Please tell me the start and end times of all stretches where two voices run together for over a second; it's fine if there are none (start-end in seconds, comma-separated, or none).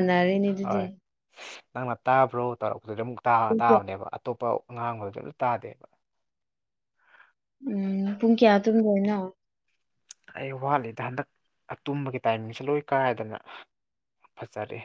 none